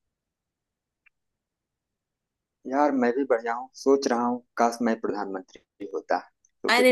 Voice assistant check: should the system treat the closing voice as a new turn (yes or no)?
yes